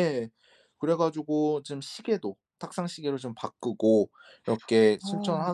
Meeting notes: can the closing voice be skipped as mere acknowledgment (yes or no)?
yes